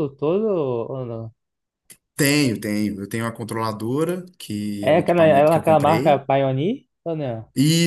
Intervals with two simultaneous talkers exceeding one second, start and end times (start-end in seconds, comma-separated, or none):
4.8-6.2